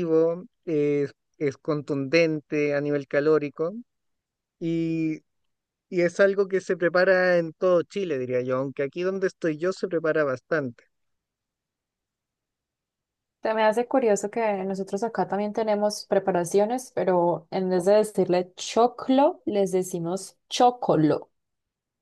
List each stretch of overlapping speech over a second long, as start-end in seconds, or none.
none